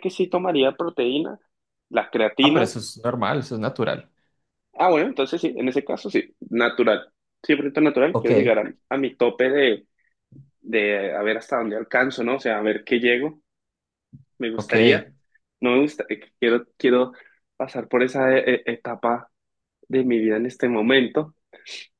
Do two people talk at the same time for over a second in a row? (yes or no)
no